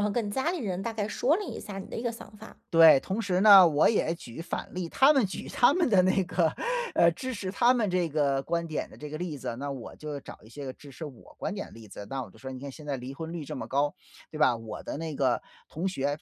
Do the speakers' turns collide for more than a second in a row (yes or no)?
no